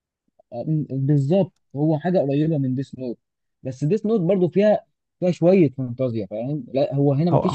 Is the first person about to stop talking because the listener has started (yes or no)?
no